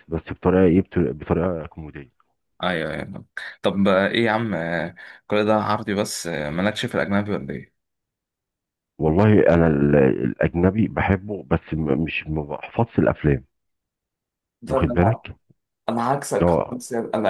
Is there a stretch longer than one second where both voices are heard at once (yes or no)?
no